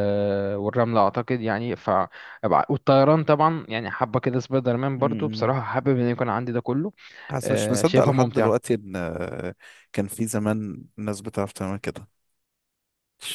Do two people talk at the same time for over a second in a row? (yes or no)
yes